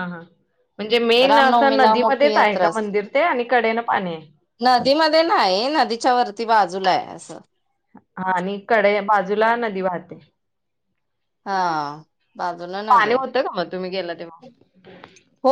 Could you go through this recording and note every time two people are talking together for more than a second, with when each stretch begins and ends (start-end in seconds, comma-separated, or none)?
1.3-2.9